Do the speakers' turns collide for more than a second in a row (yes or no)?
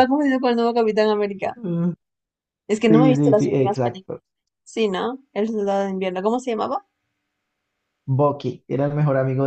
yes